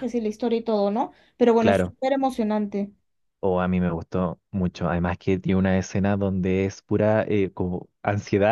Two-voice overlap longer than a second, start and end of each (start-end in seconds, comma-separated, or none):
none